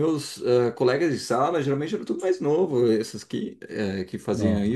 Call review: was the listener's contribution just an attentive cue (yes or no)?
yes